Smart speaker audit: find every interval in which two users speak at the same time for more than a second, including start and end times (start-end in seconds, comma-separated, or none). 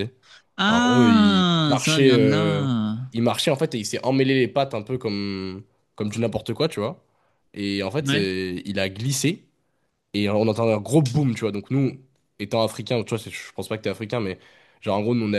0.7-2.7